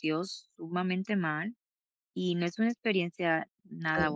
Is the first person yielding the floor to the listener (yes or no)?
yes